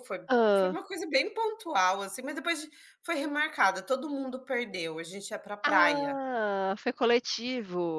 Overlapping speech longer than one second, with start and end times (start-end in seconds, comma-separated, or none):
none